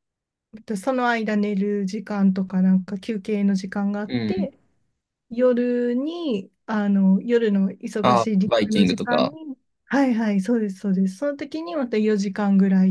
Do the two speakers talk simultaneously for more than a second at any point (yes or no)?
yes